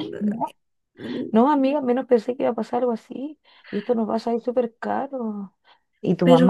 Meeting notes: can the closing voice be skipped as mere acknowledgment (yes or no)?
yes